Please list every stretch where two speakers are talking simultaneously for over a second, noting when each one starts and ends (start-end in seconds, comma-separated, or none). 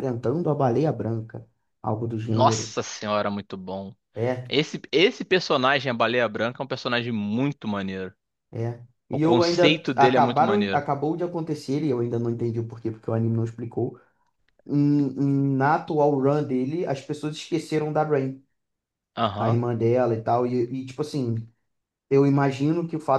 9.1-10.8